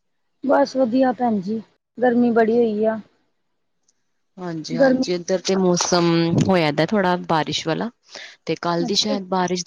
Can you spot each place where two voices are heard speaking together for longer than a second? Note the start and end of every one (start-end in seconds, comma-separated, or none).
none